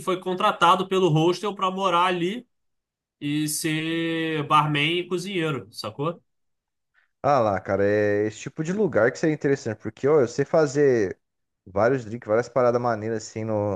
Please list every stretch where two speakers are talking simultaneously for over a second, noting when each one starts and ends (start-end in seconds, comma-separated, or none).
none